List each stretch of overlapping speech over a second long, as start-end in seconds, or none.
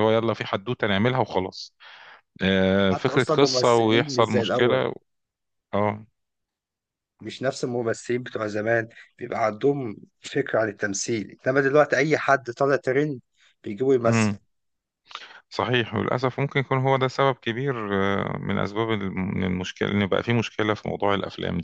2.8-4.8